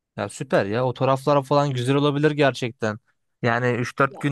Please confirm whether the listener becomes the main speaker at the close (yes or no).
no